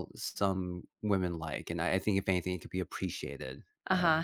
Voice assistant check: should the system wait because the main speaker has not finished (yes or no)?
no